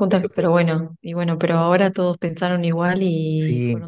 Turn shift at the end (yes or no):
yes